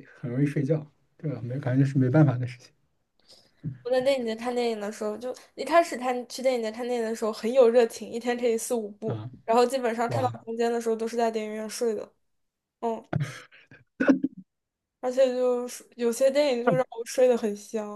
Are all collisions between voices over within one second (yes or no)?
yes